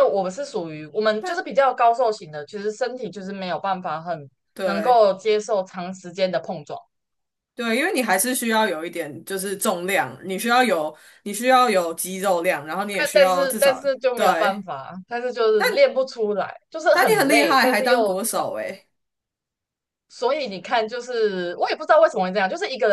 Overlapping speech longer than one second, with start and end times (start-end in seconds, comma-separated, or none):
13.0-14.6, 16.9-18.4